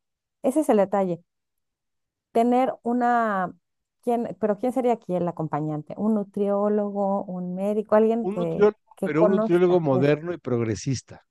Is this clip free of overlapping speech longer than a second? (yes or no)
no